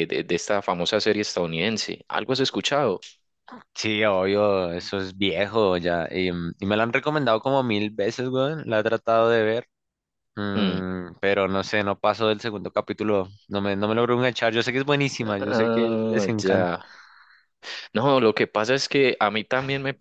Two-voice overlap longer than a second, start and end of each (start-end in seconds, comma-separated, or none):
15.4-16.7